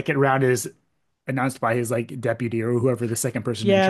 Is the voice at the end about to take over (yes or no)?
yes